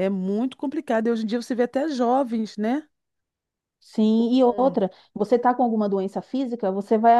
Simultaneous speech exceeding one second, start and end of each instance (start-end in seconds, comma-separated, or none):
none